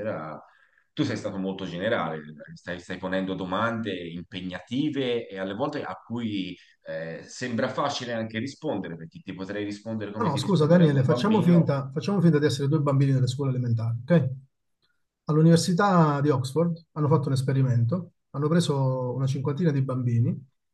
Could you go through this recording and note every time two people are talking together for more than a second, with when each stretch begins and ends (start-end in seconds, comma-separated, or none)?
10.1-11.7